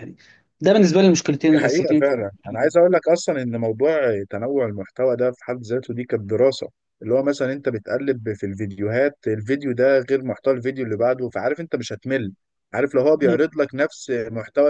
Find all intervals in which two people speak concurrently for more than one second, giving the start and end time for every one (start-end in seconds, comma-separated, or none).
none